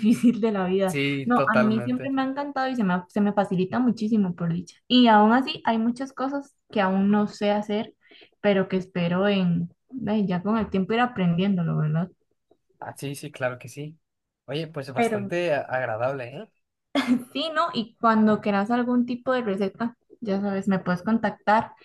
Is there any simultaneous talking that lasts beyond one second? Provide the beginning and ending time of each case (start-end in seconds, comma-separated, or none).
0.8-2.2